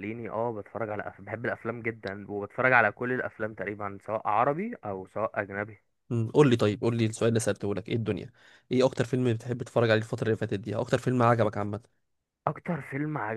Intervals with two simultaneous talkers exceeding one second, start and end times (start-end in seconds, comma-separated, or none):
none